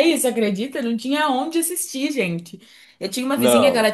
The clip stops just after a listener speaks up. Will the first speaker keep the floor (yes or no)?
yes